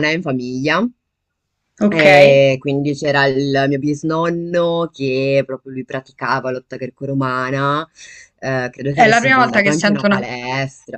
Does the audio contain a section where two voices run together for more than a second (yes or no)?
yes